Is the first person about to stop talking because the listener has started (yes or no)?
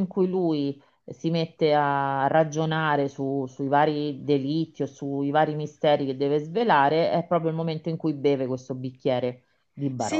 yes